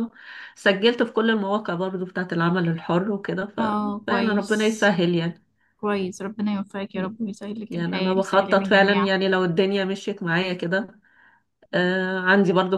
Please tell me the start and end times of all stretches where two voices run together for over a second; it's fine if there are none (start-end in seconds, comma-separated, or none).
3.6-4.9, 7.7-9.1